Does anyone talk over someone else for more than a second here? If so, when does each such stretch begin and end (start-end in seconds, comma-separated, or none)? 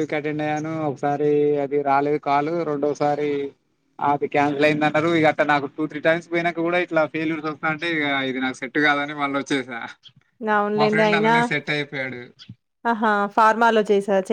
none